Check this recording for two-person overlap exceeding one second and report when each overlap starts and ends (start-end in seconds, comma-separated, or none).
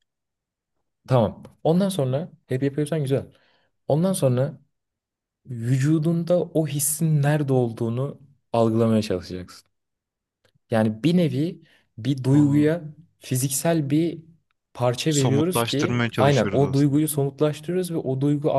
15.1-17.0